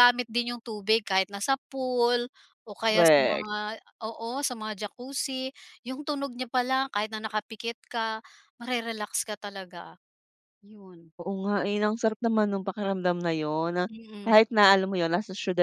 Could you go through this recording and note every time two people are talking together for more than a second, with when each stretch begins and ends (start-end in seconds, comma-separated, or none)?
none